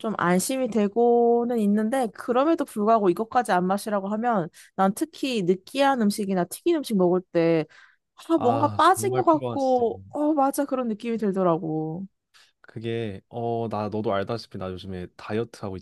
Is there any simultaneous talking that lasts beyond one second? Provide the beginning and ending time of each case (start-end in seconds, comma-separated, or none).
8.3-9.8